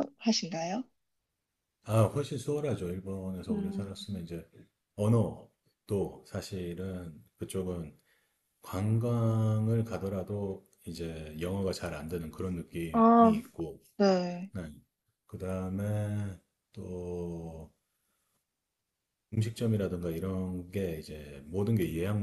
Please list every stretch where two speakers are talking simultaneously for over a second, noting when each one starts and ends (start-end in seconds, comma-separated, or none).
none